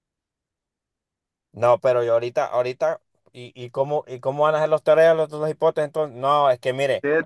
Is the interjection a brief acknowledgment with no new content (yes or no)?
no